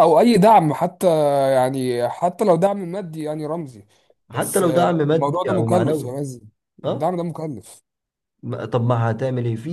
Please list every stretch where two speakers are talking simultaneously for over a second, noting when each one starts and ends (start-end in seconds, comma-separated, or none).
4.3-6.1